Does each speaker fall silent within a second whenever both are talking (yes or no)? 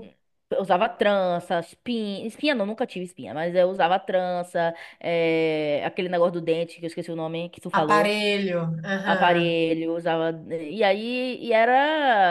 yes